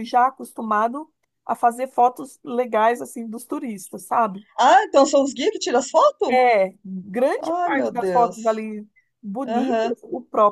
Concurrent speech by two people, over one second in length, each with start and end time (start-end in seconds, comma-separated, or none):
7.4-8.7